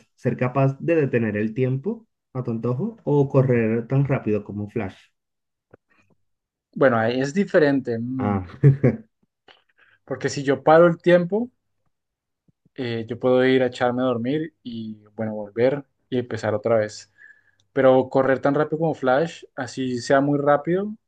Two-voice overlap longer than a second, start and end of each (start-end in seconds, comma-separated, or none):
none